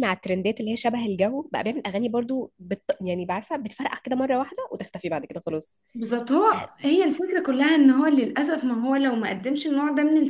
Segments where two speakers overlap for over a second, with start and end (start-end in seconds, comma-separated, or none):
none